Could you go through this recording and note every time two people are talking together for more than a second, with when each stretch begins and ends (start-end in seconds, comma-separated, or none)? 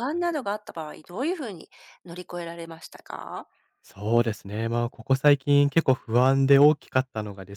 none